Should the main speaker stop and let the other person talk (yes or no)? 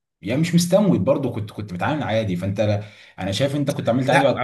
yes